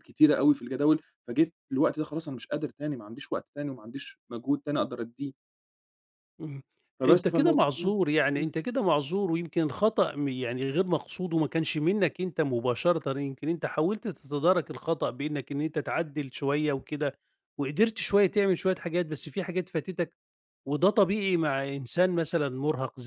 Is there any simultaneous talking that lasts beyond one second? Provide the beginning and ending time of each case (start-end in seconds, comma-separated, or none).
7.0-8.5